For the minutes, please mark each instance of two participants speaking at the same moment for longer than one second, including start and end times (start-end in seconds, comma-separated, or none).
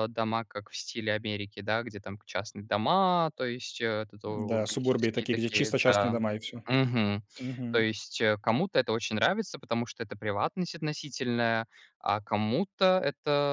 4.3-6.2